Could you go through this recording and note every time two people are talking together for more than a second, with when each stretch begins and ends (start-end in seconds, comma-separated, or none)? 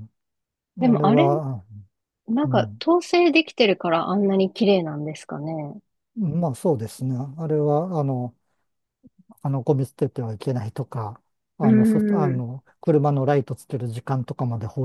none